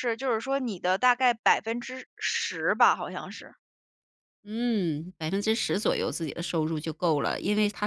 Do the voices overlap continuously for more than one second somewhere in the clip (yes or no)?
no